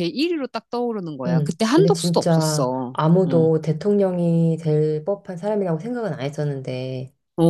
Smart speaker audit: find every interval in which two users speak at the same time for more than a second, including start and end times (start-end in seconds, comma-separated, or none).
1.3-3.5